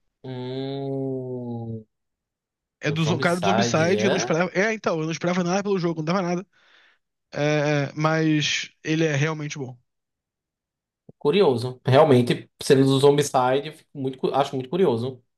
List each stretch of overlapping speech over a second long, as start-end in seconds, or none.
2.9-4.3